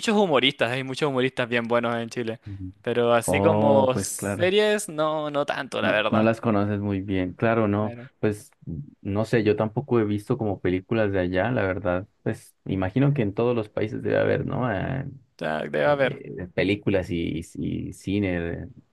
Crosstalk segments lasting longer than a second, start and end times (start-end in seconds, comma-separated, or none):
3.2-4.5